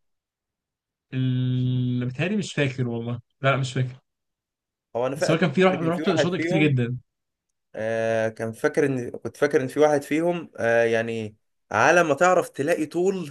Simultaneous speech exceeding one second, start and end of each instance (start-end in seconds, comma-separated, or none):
5.2-6.8